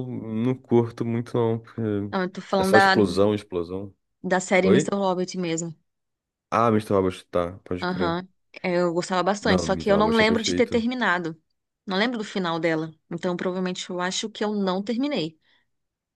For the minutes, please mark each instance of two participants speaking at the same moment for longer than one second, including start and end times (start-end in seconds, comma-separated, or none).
9.4-10.9